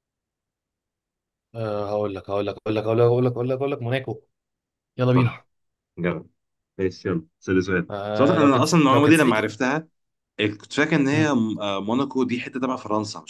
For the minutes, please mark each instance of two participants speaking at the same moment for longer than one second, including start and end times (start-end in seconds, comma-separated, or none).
7.9-9.6